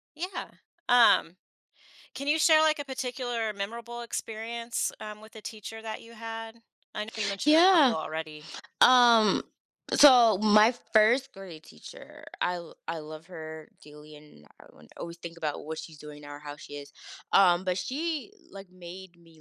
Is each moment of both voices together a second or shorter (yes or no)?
yes